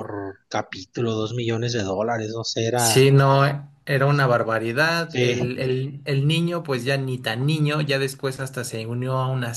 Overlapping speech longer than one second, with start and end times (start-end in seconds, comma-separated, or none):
none